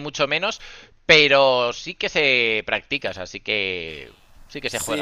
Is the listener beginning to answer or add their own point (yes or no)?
yes